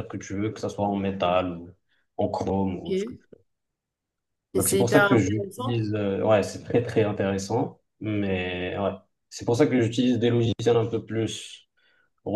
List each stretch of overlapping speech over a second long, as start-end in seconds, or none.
4.6-5.8